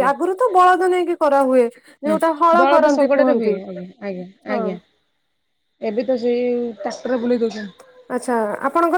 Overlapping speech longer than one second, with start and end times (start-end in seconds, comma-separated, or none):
none